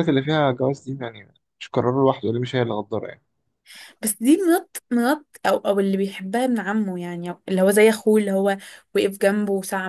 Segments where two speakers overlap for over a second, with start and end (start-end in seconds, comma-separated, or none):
none